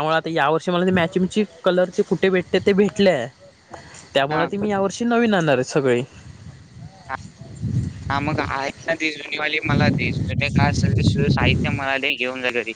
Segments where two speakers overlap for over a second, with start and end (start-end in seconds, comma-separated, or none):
none